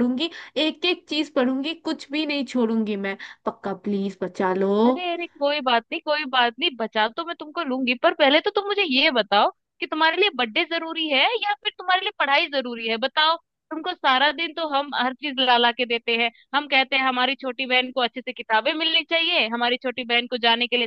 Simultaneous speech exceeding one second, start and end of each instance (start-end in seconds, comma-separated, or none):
none